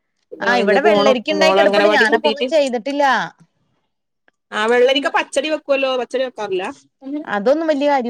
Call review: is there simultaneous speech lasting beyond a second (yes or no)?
yes